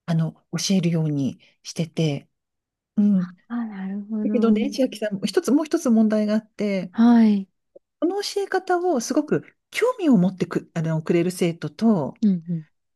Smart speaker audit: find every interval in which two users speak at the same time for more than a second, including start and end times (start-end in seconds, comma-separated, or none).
none